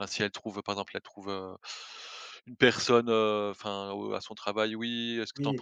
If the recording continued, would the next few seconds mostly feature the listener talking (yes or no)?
no